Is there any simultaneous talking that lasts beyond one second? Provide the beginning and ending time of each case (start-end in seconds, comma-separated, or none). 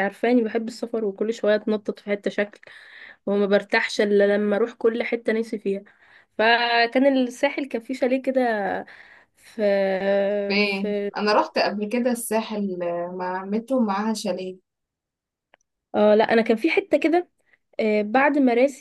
none